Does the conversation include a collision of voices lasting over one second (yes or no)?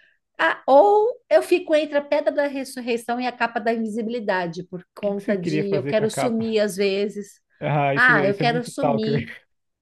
yes